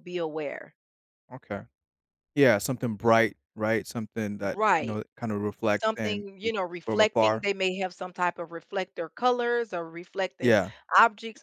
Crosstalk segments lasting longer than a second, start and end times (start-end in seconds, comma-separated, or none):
5.8-7.4